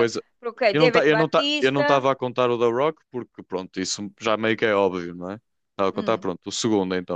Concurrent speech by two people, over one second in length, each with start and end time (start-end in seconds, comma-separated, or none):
0.7-2.1